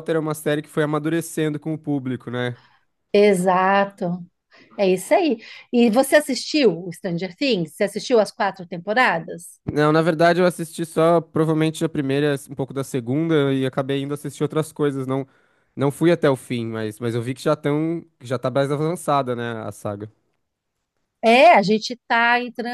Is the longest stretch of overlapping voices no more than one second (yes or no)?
yes